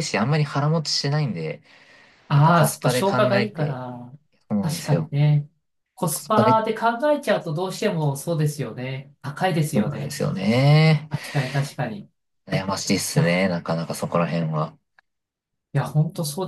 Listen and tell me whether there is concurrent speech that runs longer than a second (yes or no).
yes